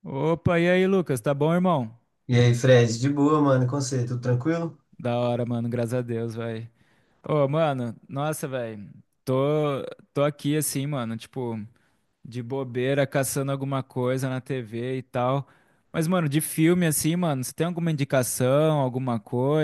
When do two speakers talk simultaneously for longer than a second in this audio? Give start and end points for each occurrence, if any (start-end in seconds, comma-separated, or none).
none